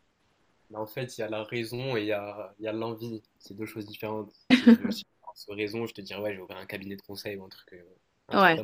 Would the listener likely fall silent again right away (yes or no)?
yes